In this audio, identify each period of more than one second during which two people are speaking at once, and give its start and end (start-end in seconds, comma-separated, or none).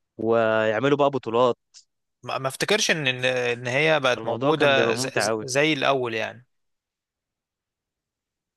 4.2-5.5